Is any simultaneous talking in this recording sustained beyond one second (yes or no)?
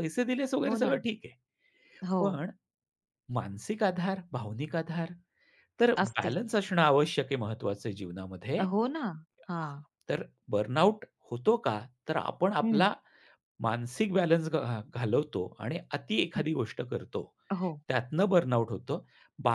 no